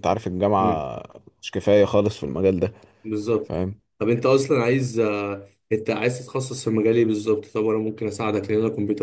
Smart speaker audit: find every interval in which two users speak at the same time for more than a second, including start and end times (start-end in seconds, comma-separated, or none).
none